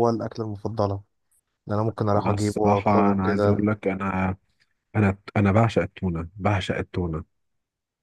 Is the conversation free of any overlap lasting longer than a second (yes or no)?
no